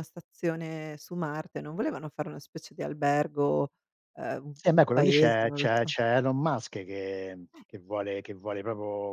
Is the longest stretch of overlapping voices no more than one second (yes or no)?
no